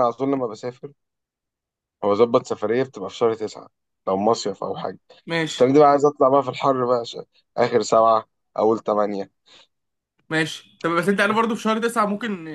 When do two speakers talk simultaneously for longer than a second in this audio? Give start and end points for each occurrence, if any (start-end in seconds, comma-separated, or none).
none